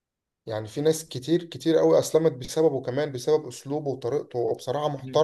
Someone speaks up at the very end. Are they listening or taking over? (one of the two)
taking over